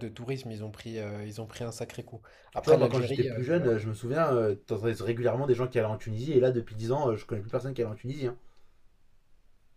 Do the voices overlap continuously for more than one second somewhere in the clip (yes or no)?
yes